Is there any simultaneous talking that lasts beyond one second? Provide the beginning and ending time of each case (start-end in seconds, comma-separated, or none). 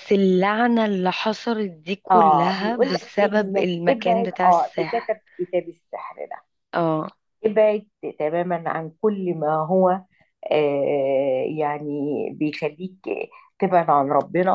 2.1-5.2